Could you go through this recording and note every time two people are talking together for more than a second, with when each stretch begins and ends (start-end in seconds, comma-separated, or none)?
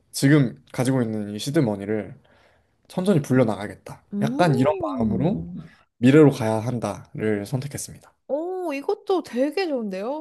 4.1-5.5